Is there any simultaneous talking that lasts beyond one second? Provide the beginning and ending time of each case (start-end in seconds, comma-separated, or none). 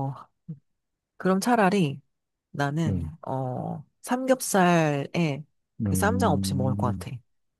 5.8-7.1